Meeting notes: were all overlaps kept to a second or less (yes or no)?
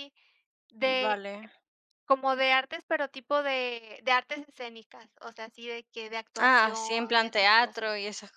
no